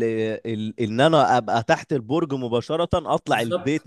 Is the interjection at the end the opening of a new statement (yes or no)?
no